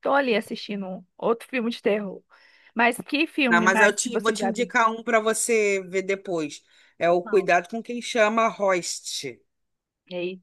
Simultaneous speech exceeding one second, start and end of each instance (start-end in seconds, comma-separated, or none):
3.5-4.7